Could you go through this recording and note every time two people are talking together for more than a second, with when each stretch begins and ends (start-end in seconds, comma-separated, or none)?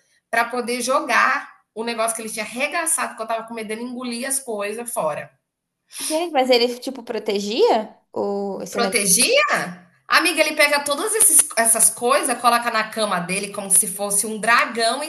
none